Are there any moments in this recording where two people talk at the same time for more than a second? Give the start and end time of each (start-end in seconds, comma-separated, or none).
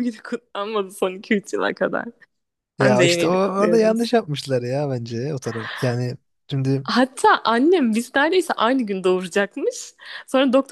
2.8-4.1